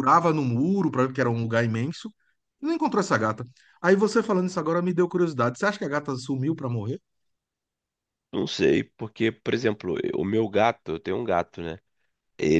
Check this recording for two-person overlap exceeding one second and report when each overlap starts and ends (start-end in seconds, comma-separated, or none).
none